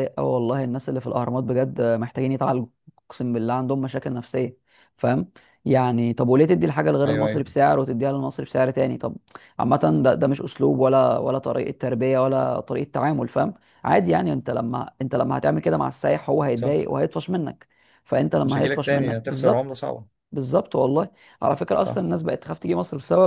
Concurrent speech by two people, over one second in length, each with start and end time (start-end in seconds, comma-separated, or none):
18.4-19.8